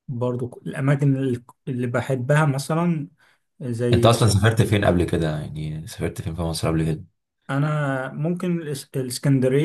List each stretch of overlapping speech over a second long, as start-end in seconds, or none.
none